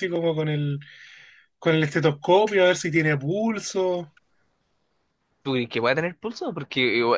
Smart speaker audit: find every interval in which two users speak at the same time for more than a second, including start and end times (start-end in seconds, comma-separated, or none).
none